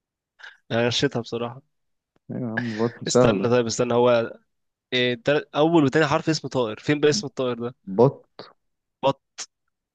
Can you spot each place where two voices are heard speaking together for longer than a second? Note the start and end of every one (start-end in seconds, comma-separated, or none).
none